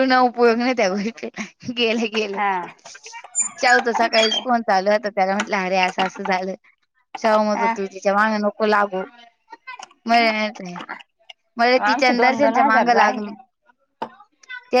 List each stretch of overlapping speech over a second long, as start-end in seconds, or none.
11.9-13.2